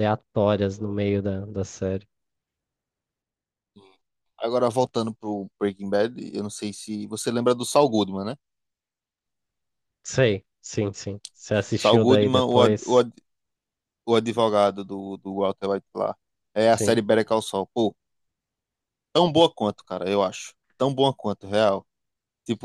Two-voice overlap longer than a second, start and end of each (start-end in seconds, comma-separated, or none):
11.8-13.1